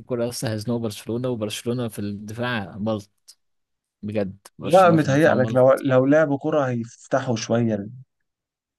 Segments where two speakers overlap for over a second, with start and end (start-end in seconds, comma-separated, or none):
4.6-5.8